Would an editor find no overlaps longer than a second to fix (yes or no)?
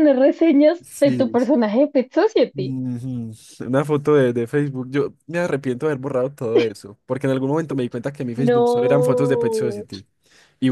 no